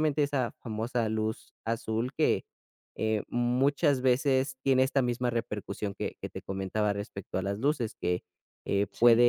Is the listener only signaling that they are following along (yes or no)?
yes